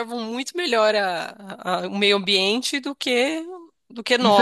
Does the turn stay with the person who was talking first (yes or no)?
no